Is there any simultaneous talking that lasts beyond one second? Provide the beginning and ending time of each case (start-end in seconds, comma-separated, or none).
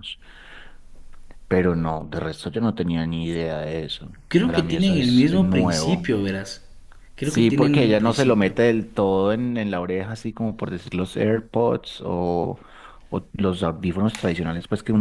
4.3-6.1, 7.2-8.5